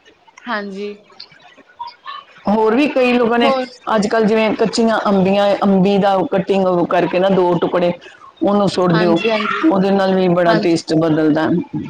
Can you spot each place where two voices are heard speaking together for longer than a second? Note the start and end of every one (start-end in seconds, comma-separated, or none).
none